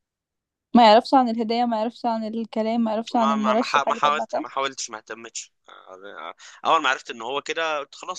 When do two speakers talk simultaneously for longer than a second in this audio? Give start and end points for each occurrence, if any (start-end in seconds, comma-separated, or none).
3.1-4.4